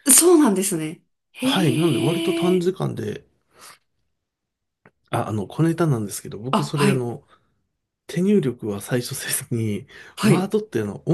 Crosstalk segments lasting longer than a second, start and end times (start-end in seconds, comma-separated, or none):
1.4-2.7